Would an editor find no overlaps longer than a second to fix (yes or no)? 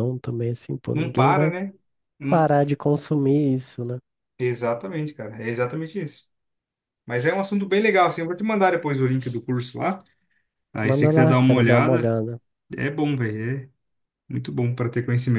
no